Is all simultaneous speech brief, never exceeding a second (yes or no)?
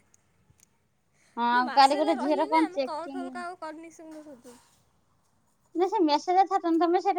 no